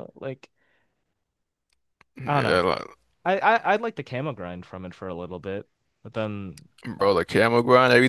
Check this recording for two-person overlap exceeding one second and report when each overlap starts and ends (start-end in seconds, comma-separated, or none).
none